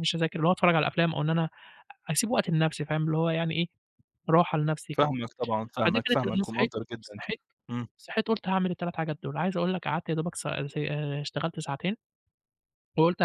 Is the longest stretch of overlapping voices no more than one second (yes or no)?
no